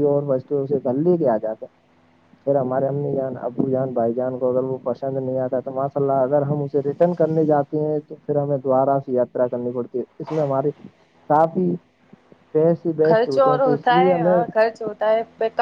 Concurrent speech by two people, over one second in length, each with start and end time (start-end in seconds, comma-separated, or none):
13.1-14.4